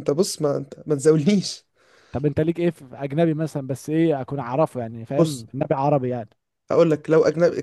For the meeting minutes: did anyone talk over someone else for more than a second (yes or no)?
no